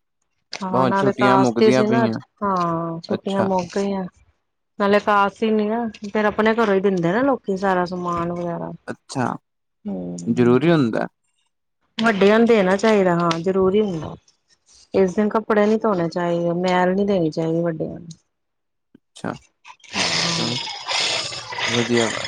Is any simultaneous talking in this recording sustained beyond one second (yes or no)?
yes